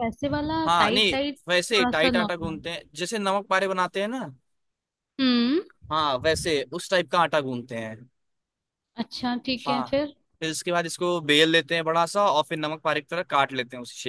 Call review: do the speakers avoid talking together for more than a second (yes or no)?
no